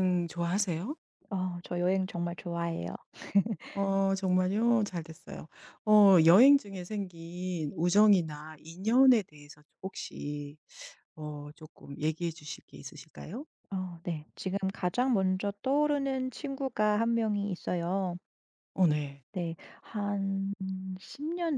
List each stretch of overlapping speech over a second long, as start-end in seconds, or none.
none